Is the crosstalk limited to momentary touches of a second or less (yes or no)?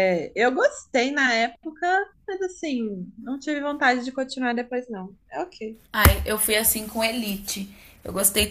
yes